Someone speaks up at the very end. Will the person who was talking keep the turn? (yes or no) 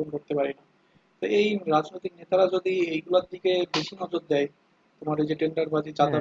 yes